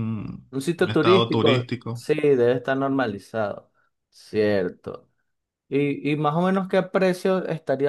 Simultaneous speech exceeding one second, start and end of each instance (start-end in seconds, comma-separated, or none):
0.5-2.1